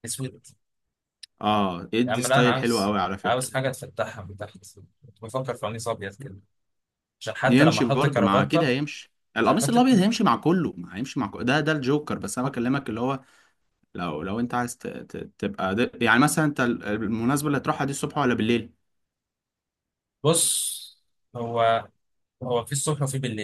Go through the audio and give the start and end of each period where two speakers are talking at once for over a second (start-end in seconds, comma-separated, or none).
2.1-3.5, 7.5-8.7